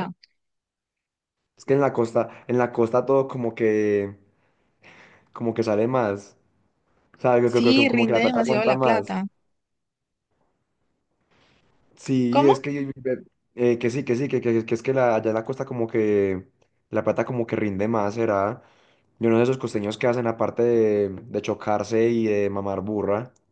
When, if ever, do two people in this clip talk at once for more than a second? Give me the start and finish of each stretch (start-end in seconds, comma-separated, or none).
7.4-9.2